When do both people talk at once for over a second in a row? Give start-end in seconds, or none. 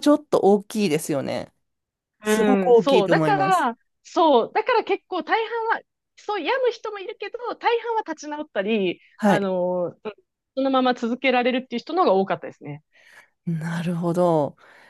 2.2-3.7